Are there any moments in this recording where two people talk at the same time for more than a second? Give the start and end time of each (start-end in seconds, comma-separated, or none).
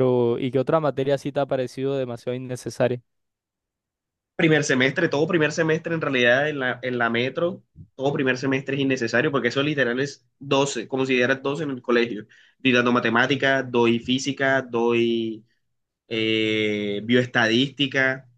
none